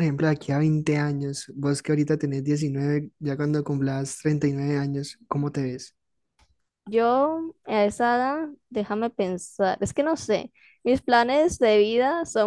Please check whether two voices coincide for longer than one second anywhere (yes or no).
no